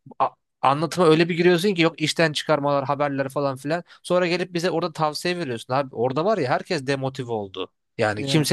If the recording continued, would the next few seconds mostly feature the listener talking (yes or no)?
no